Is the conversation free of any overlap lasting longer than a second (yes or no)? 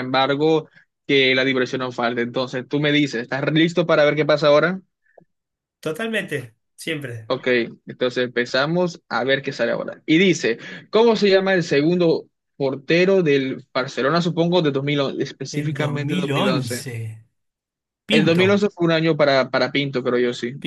no